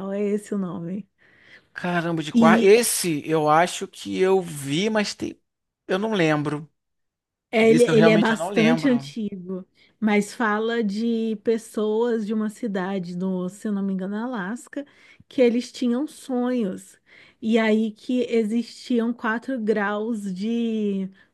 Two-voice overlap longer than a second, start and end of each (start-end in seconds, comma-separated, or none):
7.6-9.1